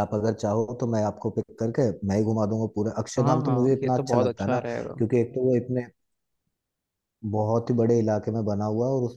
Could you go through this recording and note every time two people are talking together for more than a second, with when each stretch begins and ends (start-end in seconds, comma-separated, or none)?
3.2-5.0